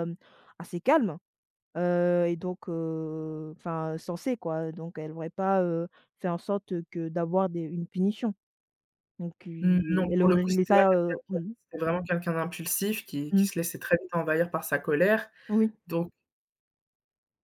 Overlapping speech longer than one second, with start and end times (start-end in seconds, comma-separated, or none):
9.6-11.5